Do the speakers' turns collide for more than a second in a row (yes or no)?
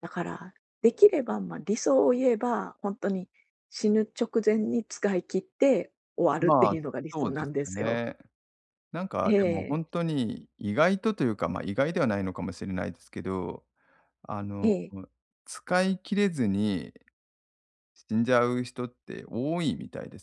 yes